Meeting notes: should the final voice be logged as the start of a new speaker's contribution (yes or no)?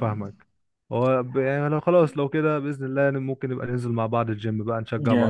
yes